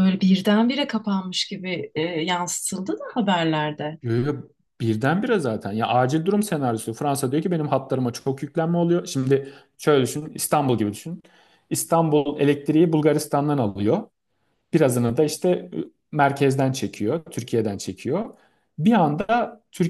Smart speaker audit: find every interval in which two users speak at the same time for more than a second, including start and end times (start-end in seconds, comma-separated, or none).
none